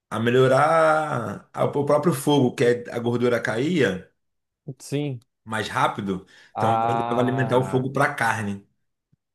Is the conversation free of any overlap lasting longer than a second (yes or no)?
no